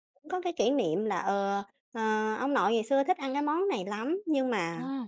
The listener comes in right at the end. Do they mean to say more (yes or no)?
no